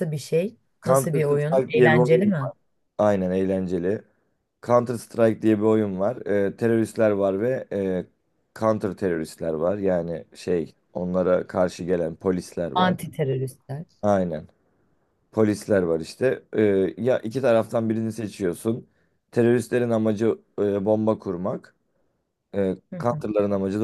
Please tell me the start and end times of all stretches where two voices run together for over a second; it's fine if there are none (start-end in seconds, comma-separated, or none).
0.8-2.3